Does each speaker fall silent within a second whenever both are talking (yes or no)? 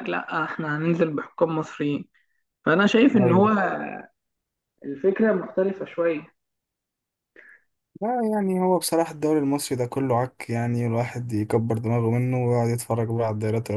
yes